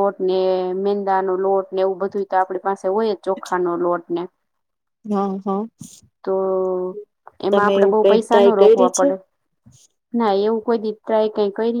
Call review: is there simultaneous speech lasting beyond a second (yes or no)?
yes